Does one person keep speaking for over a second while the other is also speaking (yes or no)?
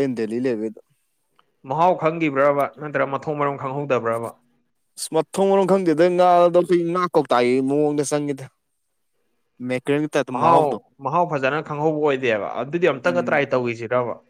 no